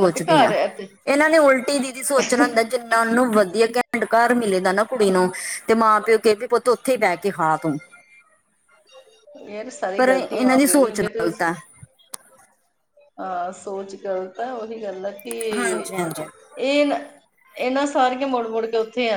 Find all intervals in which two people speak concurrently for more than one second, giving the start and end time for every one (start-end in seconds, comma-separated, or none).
10.0-11.3